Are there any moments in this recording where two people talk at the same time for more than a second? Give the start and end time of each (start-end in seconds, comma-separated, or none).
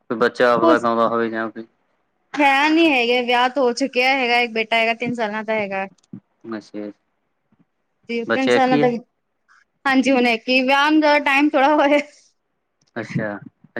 none